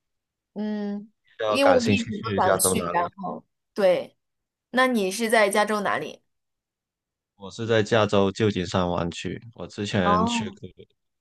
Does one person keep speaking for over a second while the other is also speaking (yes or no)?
yes